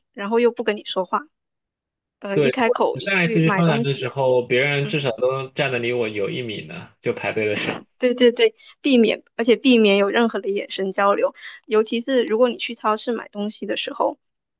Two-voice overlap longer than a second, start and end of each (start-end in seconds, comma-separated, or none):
2.3-4.1